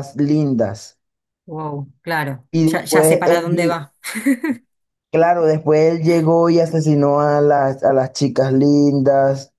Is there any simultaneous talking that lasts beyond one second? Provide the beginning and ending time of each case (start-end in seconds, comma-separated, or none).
2.5-3.8